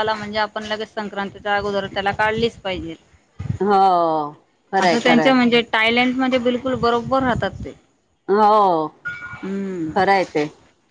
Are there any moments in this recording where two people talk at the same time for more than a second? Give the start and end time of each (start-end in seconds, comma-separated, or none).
none